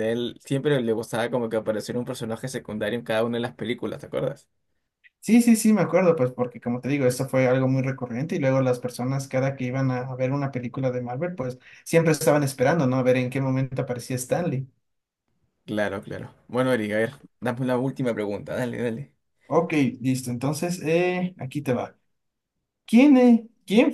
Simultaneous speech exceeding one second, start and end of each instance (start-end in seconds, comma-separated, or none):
none